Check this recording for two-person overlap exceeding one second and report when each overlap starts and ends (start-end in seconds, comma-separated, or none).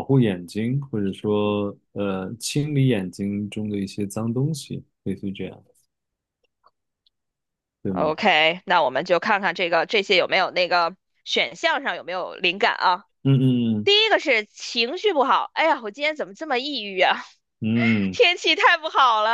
none